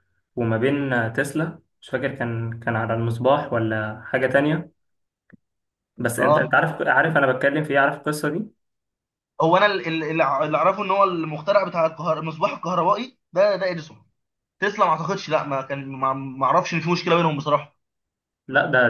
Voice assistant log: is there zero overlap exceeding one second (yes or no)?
yes